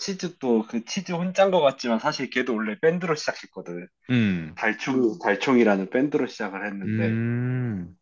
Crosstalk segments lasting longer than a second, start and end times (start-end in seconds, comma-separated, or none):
none